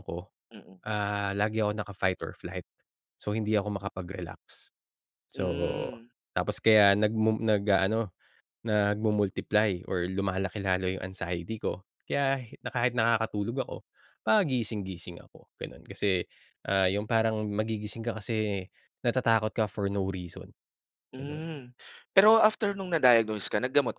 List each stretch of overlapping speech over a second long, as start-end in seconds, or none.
none